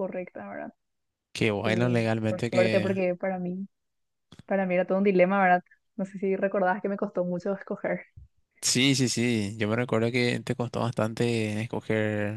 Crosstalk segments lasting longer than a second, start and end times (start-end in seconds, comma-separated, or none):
1.6-2.9